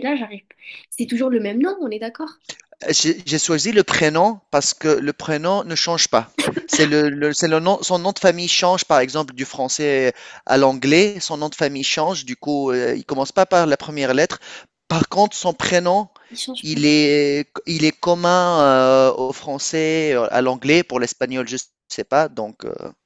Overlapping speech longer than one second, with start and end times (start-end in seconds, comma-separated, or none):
none